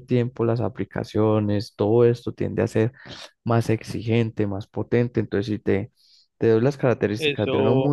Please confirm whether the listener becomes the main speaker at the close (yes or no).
no